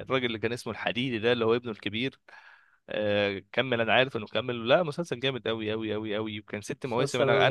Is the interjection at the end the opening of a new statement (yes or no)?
no